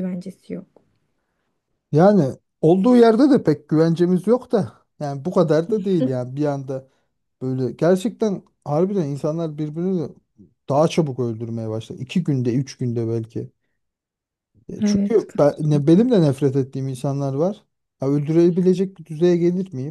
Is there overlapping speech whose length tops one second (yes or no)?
yes